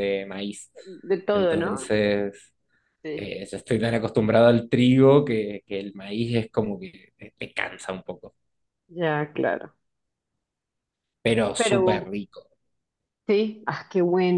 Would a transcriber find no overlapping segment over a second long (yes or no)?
yes